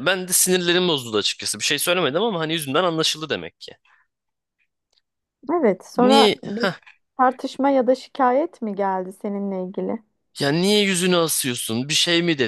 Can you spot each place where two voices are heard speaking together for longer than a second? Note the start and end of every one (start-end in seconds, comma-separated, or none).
none